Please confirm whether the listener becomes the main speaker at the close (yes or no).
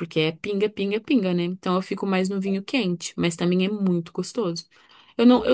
no